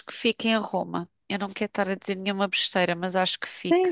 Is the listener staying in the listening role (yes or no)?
no